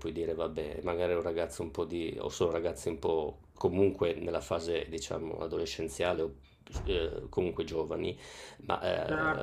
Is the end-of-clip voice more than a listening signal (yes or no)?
no